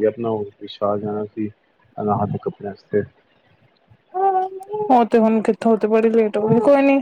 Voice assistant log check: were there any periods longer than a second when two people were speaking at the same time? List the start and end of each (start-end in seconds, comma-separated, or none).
none